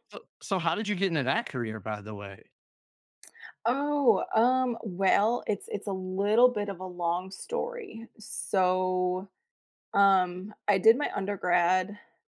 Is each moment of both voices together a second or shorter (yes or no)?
yes